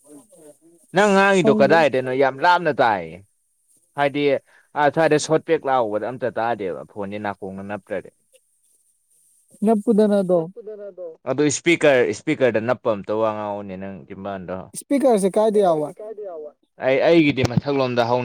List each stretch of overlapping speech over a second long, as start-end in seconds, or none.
none